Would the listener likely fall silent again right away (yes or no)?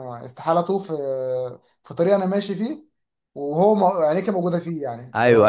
no